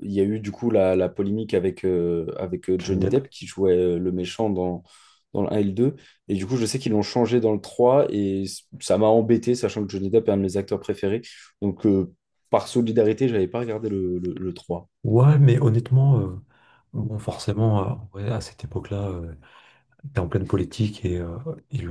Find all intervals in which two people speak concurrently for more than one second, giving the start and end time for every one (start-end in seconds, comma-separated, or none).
none